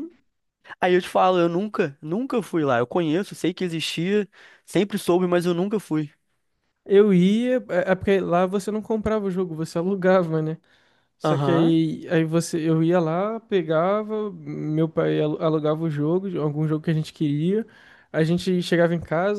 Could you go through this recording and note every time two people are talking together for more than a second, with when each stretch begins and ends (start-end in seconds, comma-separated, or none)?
none